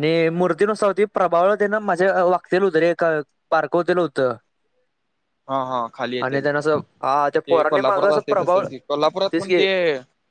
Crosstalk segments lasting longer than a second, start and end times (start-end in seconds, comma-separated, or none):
6.2-8.7